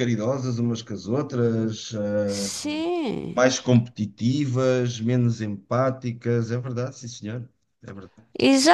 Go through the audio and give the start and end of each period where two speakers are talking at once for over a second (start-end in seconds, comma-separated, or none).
none